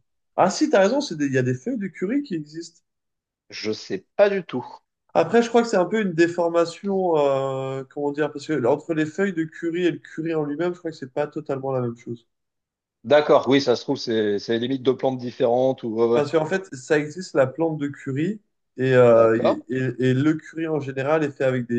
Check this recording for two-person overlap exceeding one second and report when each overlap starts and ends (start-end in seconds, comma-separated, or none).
none